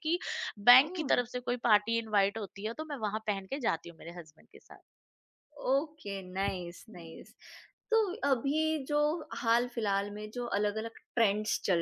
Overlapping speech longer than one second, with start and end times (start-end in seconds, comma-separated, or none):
none